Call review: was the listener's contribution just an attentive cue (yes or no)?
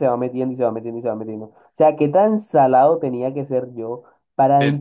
yes